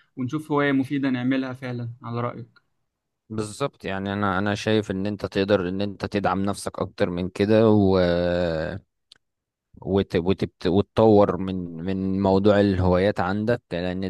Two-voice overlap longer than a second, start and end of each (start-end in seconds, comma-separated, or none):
none